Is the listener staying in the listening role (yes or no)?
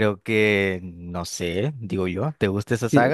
no